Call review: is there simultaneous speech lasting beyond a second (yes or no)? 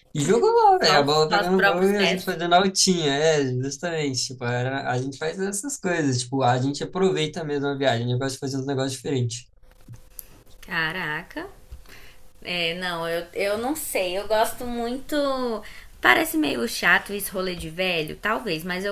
yes